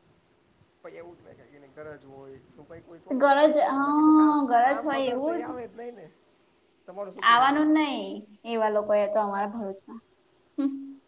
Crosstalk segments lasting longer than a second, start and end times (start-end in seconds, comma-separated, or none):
3.2-5.4